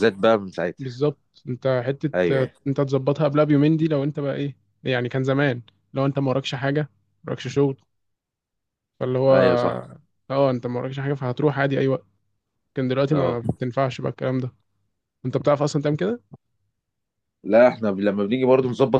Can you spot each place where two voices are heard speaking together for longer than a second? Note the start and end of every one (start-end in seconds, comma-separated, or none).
none